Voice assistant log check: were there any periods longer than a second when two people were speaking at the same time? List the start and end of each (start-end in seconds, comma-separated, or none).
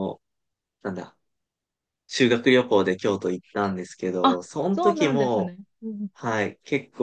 4.2-5.5